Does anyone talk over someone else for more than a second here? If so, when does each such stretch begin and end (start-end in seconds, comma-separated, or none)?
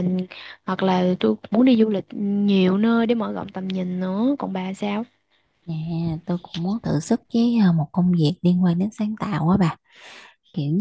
none